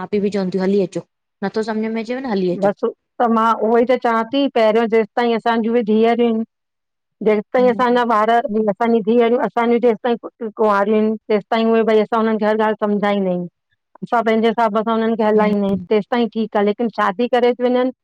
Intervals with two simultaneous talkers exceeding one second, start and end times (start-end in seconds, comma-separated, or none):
none